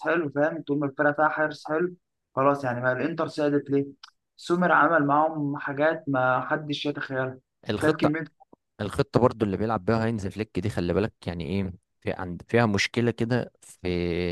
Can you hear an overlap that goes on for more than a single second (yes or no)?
no